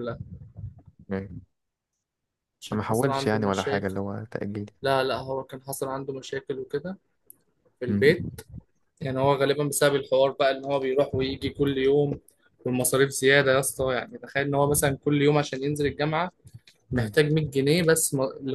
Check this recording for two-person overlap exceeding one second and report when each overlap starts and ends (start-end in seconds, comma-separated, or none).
2.7-3.9